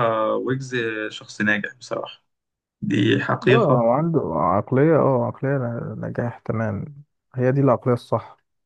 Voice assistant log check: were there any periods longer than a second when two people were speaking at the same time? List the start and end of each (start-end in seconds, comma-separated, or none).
none